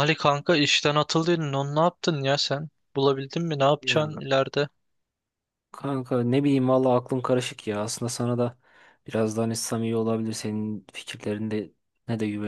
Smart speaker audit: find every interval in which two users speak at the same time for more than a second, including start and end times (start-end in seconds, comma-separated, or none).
none